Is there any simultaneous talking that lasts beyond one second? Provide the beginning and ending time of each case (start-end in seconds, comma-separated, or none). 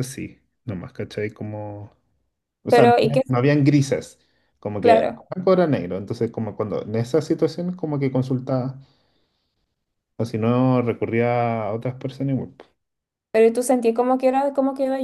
none